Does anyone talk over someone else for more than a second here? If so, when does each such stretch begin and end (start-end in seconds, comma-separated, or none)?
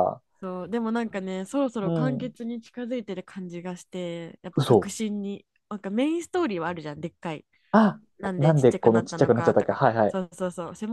8.4-10.2